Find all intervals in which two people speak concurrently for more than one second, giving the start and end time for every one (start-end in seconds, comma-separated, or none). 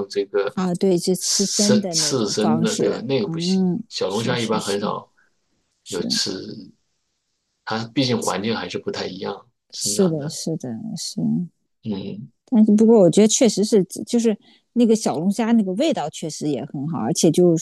1.2-4.9